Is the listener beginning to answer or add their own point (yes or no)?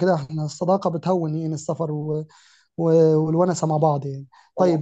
no